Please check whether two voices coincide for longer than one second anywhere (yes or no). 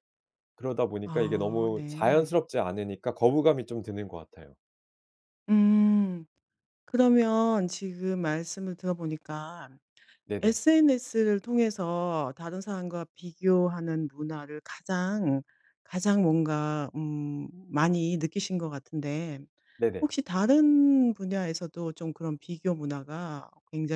yes